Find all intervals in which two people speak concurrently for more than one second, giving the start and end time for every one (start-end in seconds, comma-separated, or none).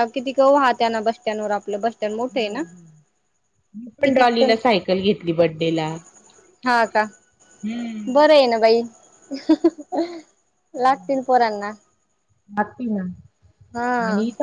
none